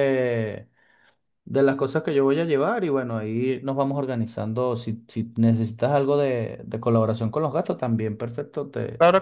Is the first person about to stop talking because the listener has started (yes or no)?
yes